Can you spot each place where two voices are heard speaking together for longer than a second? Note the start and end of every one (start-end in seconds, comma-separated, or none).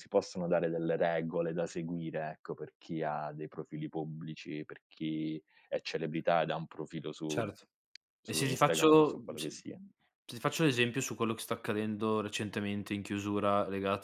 8.2-9.6